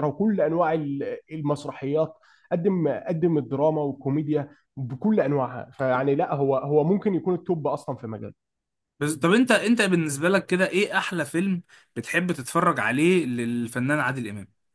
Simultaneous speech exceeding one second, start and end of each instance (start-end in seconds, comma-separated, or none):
none